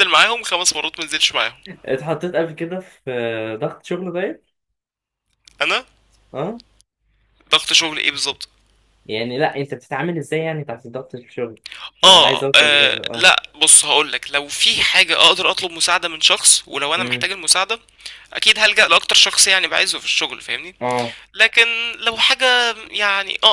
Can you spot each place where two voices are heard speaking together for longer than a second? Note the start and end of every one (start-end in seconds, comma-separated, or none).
12.0-13.3